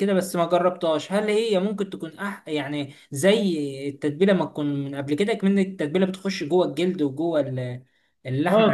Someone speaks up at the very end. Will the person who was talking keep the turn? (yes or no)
no